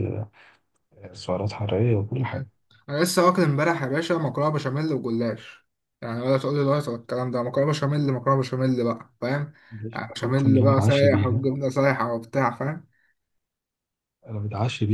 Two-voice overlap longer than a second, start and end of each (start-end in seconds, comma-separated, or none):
9.9-11.4